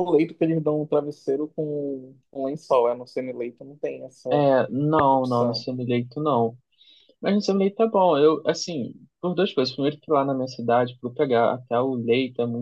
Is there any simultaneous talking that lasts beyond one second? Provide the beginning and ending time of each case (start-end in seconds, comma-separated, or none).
none